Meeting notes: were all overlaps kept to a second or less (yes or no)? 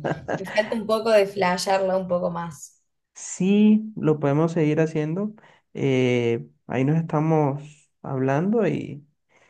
yes